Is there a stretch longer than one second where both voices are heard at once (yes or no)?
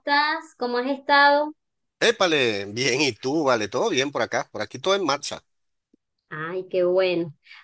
no